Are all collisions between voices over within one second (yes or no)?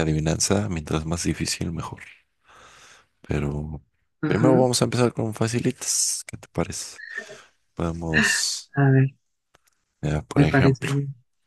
yes